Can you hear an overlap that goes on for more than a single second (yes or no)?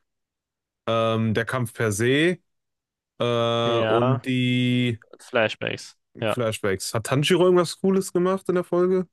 no